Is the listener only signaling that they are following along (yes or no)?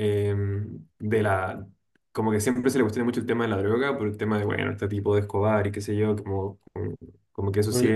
yes